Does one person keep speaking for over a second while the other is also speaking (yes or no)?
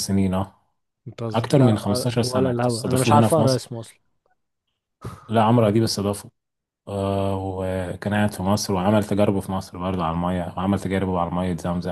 yes